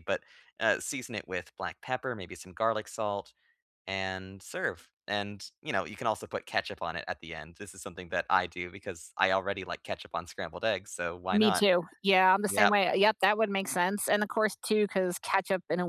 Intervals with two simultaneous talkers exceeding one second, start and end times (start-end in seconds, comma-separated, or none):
none